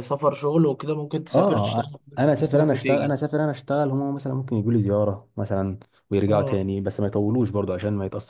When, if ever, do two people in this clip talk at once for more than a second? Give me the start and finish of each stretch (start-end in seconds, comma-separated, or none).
1.3-3.1